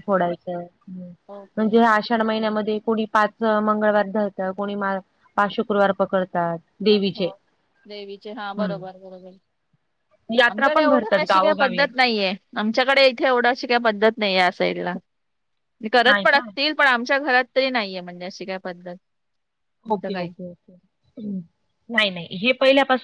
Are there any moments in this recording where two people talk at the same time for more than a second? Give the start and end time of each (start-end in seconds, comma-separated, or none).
10.5-11.8